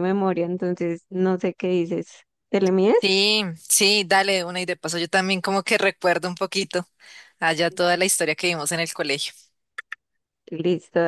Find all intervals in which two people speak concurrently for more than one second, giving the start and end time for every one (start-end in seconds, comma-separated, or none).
none